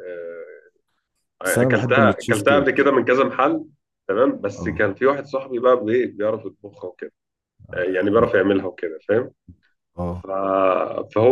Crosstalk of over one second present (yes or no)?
yes